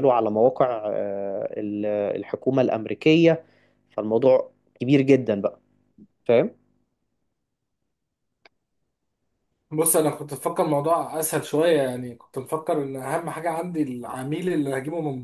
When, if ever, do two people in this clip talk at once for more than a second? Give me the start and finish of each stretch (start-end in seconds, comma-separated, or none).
none